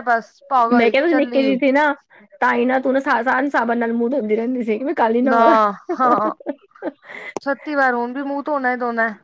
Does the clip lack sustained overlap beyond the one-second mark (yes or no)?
yes